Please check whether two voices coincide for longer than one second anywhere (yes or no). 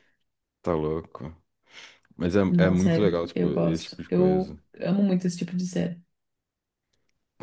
yes